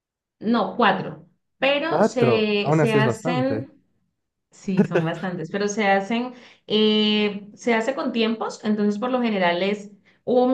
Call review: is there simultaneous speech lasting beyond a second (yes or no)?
yes